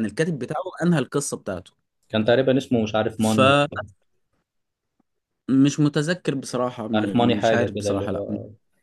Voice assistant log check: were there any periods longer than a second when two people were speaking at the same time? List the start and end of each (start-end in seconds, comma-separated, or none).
6.8-8.2